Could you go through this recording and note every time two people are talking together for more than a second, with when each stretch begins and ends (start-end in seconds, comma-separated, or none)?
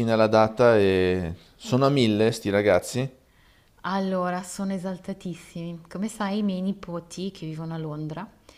none